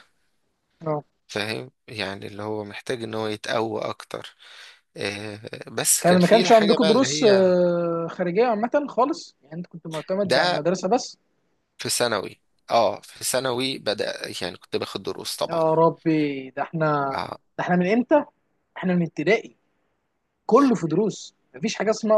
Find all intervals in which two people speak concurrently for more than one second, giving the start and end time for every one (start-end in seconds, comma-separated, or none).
6.0-7.6